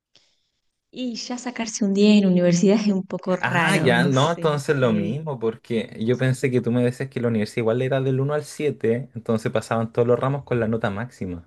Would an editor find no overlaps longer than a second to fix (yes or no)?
no